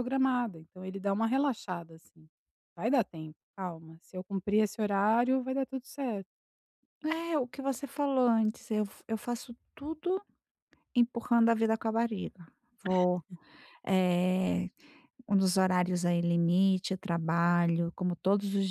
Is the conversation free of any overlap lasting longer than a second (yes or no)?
yes